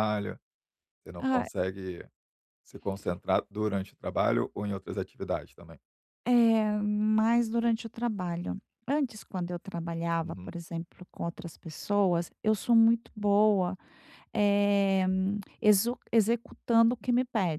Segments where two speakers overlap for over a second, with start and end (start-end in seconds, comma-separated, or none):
none